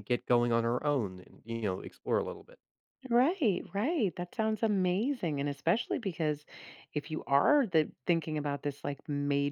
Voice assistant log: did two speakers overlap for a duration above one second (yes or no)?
no